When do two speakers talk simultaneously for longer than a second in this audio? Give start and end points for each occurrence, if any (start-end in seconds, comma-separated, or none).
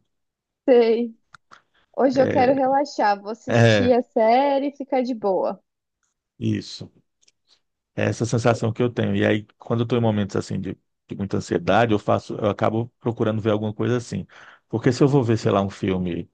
none